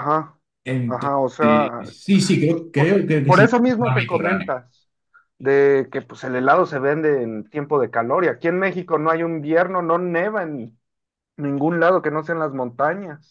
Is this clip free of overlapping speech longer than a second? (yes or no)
no